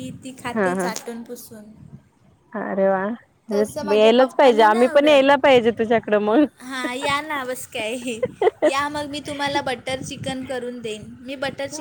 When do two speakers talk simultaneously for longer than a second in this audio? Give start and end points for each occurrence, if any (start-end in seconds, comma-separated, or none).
3.5-5.5